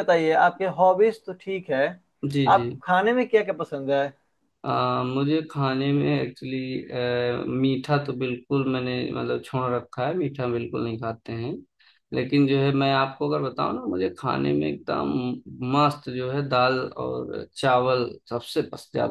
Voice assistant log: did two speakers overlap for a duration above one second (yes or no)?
no